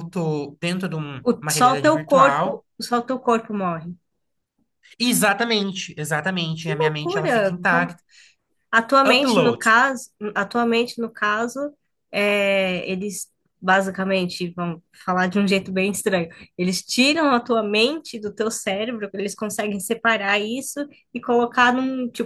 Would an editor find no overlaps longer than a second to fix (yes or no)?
no